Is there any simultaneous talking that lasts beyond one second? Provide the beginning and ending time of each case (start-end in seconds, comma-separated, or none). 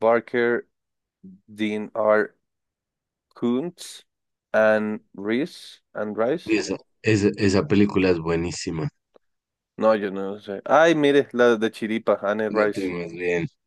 none